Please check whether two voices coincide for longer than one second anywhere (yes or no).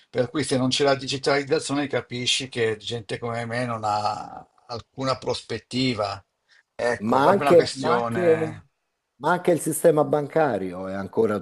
yes